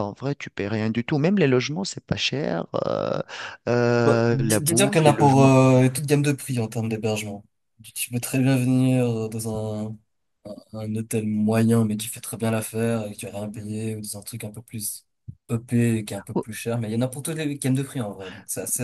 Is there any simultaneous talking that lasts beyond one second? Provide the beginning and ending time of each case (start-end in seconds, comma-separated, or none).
4.0-5.5